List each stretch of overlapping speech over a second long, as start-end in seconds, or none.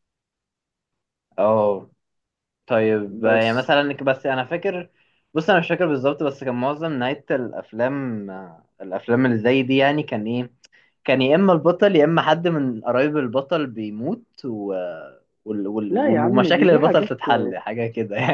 15.9-17.1